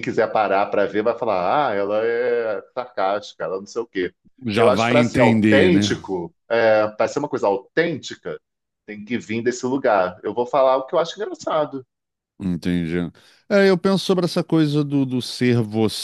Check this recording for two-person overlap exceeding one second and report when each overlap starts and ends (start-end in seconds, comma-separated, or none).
4.5-6.0